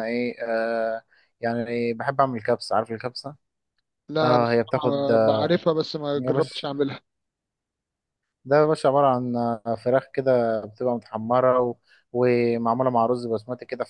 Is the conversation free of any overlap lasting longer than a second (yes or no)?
no